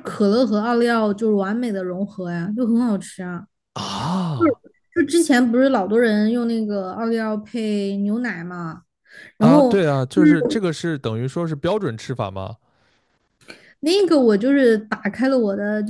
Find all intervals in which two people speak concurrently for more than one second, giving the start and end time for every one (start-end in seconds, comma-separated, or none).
none